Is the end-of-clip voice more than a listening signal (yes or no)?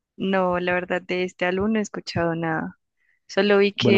no